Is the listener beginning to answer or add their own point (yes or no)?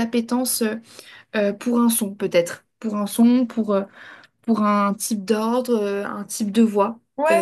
yes